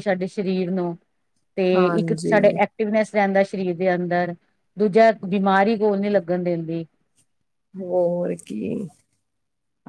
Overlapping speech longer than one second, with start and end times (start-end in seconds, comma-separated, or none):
none